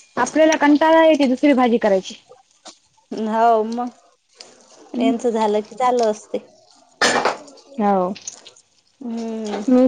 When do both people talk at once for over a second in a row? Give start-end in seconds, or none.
none